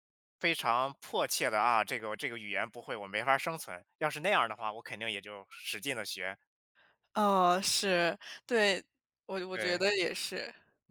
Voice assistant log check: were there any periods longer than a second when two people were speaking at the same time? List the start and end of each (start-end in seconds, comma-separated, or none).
none